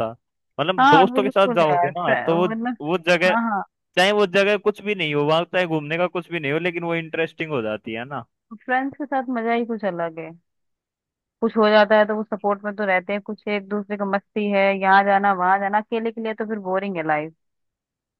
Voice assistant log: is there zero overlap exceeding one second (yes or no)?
no